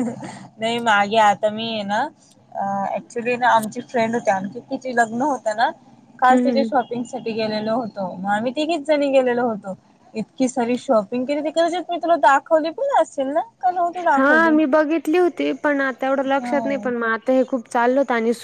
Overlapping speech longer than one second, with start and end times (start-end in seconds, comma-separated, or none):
none